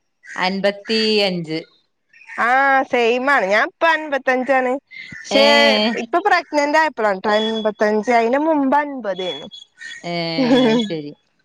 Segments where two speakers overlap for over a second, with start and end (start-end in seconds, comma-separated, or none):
none